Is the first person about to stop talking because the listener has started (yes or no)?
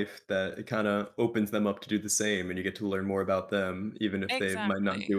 no